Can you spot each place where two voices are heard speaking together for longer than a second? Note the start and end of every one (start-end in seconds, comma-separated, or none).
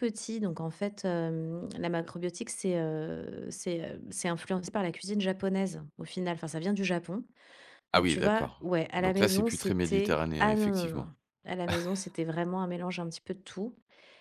7.9-11.1